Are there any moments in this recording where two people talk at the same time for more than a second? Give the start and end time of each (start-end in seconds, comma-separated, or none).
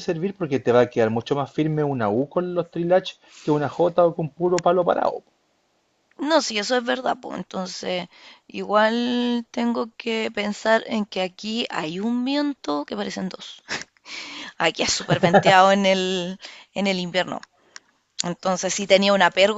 none